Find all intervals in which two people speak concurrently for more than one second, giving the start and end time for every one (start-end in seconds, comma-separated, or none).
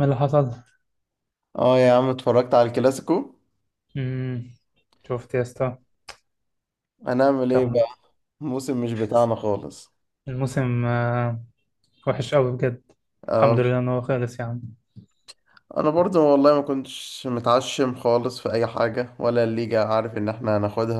none